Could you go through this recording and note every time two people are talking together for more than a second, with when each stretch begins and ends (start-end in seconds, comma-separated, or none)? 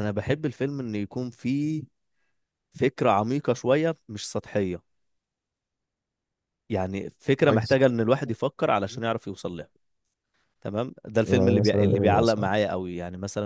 11.2-12.5